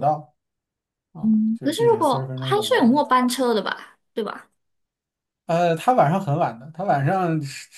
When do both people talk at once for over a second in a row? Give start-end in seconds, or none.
1.2-3.0